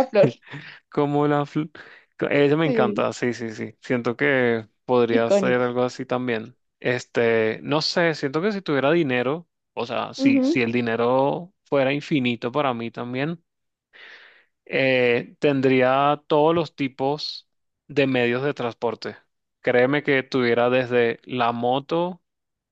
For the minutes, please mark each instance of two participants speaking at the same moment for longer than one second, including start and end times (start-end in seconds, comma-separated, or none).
none